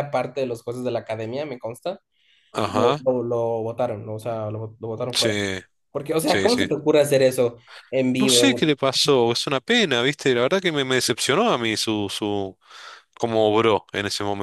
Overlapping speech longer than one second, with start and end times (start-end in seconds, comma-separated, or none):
none